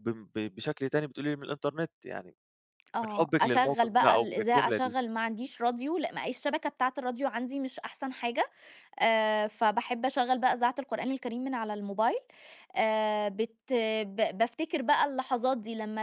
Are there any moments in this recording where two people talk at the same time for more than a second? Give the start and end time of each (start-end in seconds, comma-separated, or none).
3.0-5.0